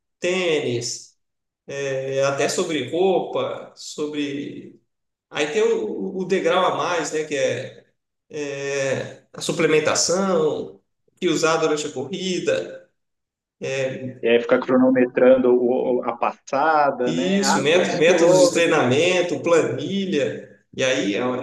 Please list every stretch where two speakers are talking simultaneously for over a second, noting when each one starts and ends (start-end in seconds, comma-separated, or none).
17.0-18.9